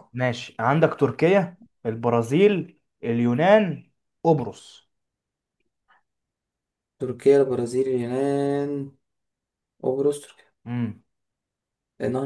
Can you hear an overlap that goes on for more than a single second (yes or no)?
no